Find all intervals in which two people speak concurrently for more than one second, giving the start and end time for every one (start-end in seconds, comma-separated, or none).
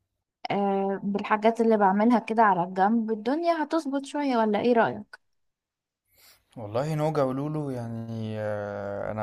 none